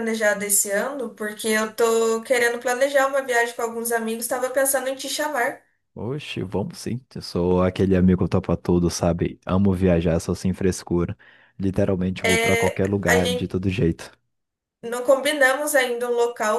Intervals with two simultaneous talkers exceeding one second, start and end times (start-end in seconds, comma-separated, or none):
12.2-13.5